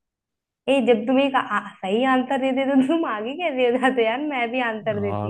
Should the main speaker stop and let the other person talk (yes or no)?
yes